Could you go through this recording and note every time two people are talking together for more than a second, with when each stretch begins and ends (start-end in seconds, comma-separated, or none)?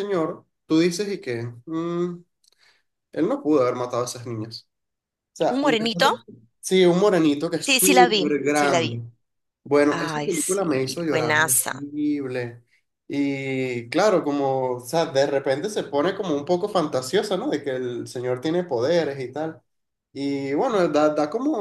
7.7-9.0, 9.9-11.8